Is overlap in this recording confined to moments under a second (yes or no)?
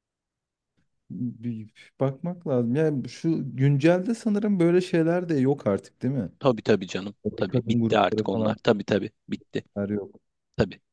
no